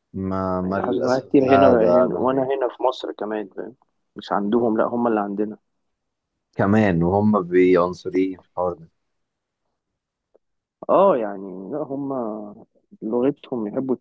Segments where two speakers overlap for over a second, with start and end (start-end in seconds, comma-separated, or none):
0.6-2.5